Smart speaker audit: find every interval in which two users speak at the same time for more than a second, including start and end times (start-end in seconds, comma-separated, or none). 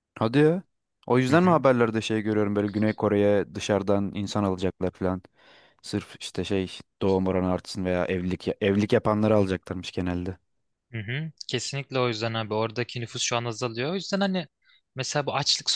none